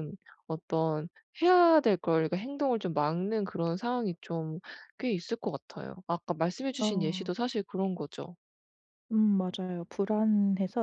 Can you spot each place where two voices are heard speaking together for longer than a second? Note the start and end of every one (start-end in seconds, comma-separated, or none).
none